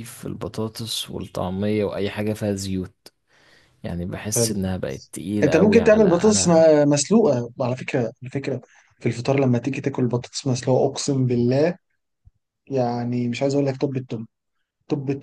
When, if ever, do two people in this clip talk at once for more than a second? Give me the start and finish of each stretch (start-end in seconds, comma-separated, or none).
5.4-6.6